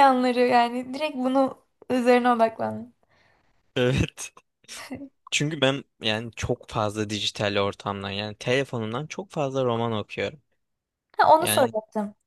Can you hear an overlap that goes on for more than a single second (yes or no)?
no